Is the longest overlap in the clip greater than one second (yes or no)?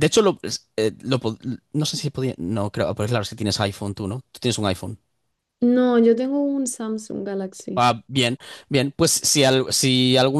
no